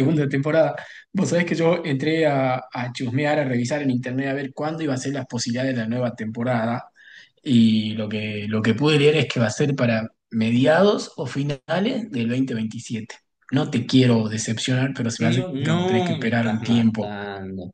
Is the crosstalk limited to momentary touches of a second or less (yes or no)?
no